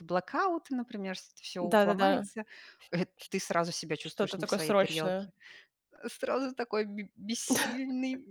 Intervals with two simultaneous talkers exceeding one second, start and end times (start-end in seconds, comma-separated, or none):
4.0-5.3